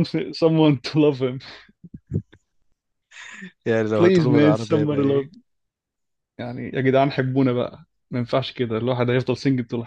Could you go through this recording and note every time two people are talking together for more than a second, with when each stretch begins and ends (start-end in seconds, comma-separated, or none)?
3.9-5.3